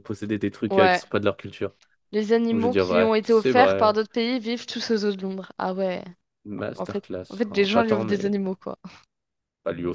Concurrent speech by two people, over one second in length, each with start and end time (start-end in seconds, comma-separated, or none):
2.5-4.0, 6.8-8.3